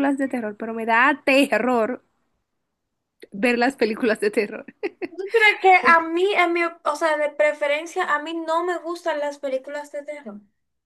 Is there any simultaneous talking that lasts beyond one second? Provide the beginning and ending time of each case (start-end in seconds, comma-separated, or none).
none